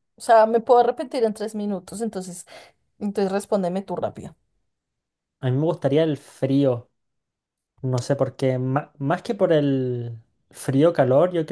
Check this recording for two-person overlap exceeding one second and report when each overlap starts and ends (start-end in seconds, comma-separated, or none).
none